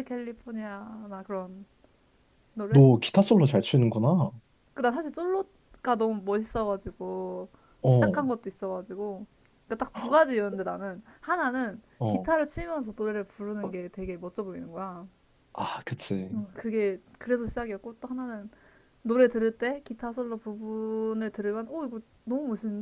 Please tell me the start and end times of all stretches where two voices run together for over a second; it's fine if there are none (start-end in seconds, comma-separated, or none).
none